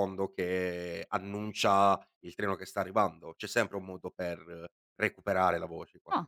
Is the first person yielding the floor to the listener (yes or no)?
yes